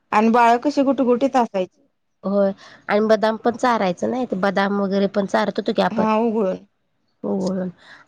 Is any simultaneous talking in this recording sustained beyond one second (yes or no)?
no